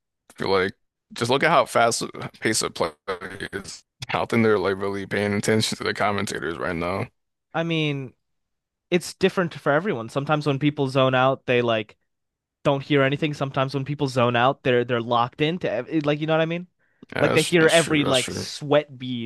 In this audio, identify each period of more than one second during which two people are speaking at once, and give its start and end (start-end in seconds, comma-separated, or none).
17.2-18.5